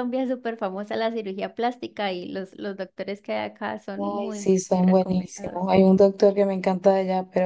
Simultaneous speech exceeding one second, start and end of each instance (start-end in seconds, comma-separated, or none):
4.0-5.6